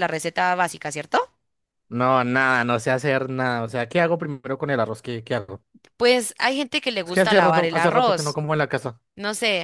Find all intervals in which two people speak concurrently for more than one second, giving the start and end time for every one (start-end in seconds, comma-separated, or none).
7.0-8.4